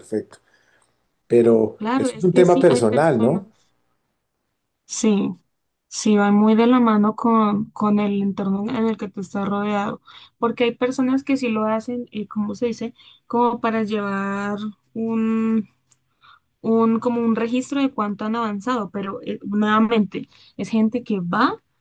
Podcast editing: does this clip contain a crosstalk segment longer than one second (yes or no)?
yes